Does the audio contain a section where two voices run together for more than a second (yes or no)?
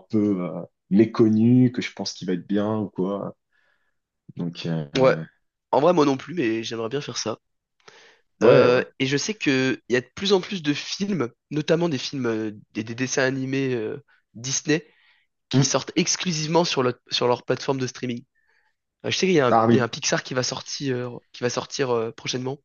no